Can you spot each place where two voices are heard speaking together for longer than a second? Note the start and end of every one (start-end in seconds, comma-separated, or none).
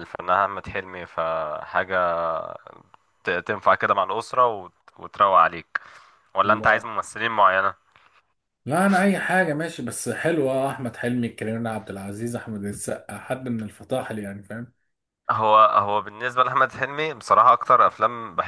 none